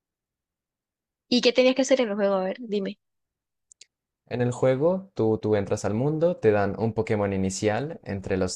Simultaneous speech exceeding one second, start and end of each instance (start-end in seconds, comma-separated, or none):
none